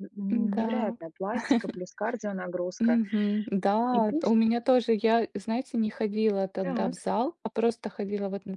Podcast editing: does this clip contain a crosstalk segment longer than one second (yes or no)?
no